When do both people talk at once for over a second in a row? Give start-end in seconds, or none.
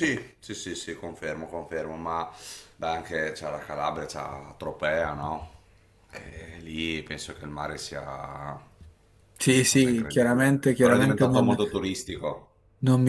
9.5-11.6